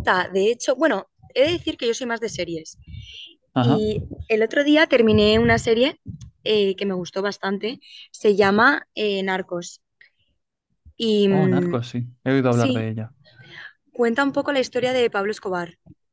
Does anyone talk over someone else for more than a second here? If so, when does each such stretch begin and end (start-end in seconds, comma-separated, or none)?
none